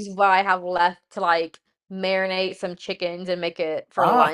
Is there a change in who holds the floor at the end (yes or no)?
yes